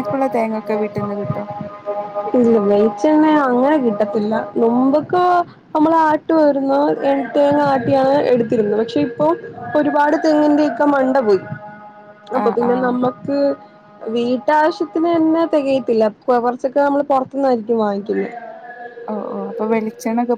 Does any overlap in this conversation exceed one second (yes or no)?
no